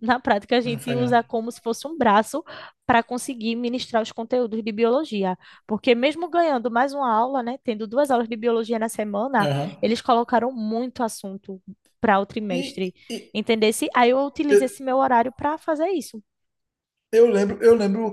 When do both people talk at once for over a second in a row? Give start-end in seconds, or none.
none